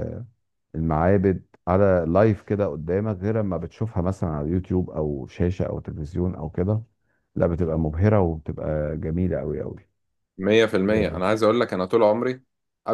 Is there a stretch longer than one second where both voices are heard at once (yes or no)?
no